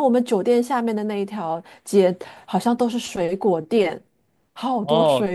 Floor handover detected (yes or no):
yes